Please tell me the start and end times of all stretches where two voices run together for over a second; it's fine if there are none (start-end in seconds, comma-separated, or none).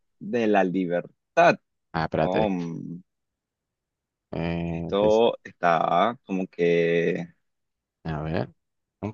none